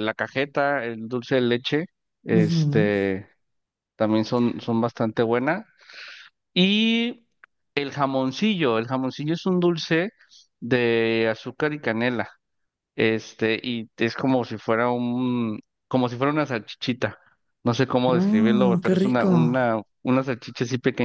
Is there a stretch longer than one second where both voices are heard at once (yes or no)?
yes